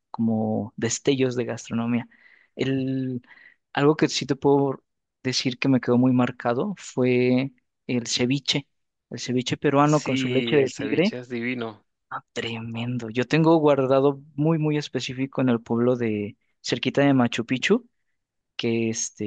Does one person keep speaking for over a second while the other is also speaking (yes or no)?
yes